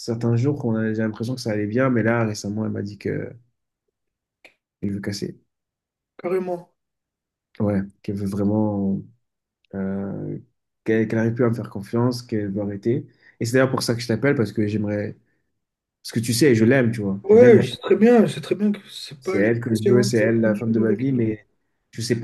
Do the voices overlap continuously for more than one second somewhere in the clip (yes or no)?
yes